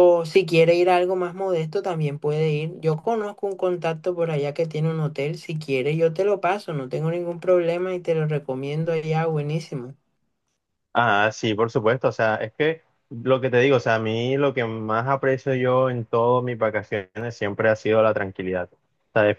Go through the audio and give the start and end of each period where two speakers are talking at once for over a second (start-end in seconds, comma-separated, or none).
none